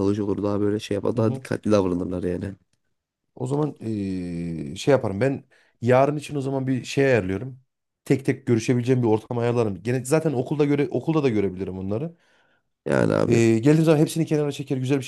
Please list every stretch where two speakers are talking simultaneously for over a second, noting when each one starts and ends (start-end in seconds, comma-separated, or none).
none